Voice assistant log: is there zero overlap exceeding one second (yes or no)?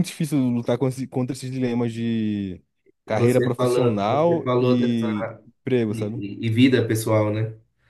no